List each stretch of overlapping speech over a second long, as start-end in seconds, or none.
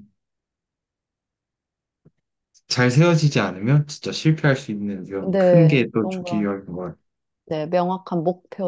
5.2-6.5